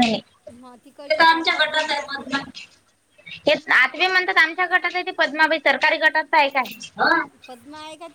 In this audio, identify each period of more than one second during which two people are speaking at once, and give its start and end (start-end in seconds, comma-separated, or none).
0.6-2.2